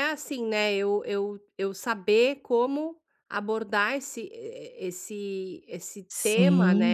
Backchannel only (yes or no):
no